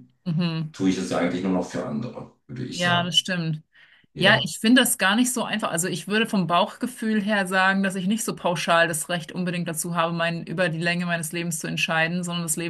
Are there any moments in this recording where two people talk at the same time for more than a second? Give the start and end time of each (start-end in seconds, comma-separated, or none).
none